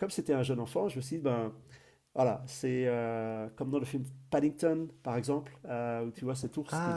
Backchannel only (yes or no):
yes